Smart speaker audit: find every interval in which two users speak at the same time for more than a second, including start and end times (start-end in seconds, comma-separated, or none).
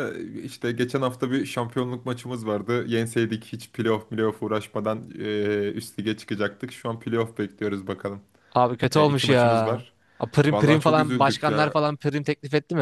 10.5-11.7